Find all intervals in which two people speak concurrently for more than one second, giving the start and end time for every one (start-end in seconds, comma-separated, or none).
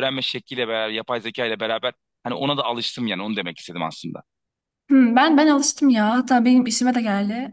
none